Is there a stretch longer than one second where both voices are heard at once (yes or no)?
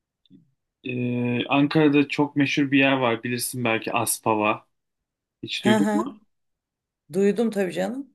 no